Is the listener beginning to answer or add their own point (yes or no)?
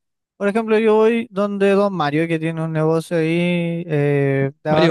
no